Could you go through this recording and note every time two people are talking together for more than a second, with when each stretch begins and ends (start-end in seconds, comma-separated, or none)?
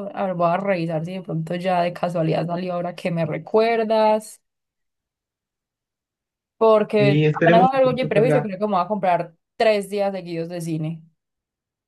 7.0-8.5